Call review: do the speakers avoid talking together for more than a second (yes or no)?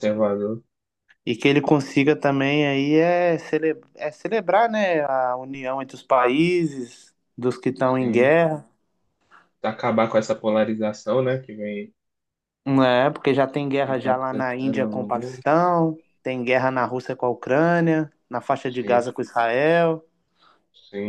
no